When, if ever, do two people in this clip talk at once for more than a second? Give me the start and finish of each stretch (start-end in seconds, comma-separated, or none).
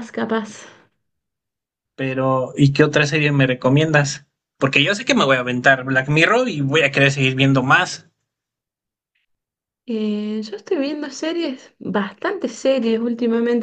none